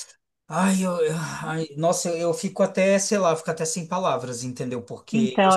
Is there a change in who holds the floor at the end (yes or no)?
yes